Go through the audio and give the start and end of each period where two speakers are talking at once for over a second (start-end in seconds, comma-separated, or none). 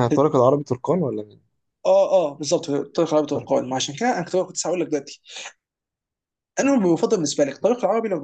none